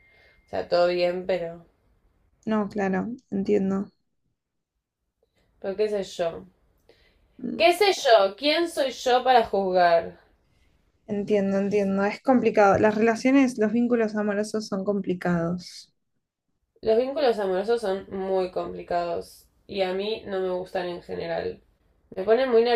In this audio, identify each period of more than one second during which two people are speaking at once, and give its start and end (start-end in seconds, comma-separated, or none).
none